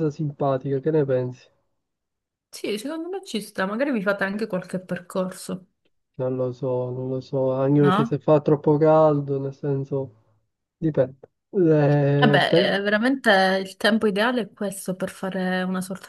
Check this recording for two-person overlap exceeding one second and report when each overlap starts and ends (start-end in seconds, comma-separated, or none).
none